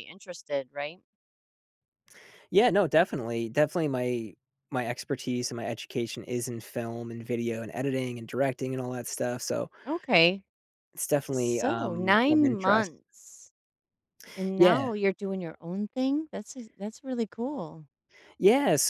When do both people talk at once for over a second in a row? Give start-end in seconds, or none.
11.3-12.9